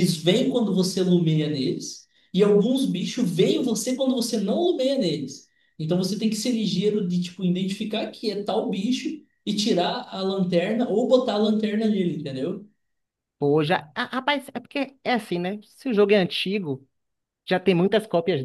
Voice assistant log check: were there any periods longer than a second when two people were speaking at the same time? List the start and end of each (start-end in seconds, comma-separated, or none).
none